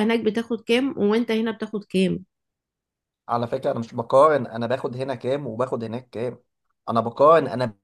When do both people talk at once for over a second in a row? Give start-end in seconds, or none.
none